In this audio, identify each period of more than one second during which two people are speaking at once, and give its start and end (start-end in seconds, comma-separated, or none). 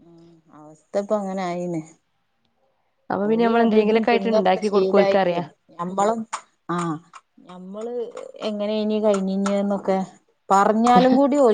3.3-5.4